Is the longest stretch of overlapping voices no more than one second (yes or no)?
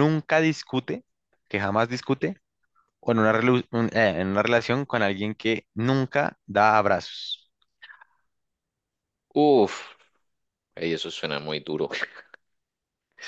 yes